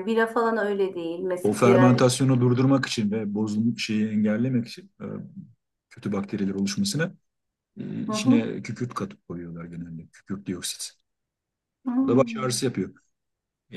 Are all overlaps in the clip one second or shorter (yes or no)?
yes